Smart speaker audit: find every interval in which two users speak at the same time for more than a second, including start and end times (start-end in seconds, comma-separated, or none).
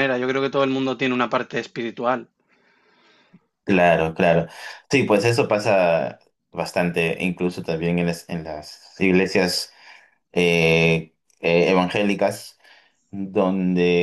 none